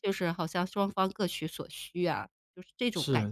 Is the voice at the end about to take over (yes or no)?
yes